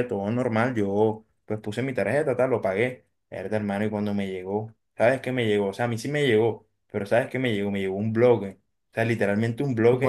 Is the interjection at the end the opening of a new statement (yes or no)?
no